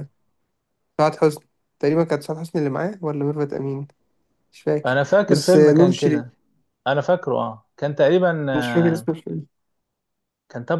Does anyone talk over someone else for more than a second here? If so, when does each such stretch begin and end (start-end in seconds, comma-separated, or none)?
4.9-6.3